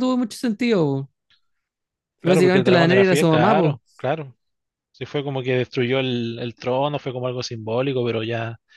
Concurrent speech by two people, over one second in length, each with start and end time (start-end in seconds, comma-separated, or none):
2.2-4.0